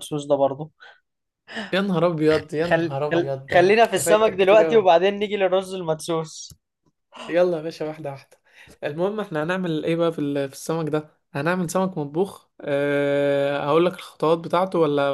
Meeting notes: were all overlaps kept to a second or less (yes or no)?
no